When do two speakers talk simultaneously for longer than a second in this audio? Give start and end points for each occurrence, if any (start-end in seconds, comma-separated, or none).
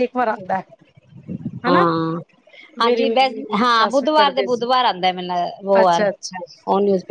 2.8-4.7